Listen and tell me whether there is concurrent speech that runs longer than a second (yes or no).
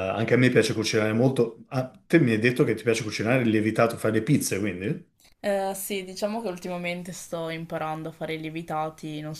no